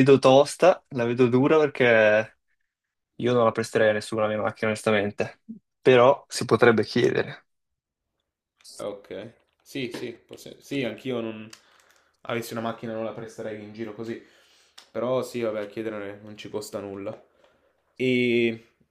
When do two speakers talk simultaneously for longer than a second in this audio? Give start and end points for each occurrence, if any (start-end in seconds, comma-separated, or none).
none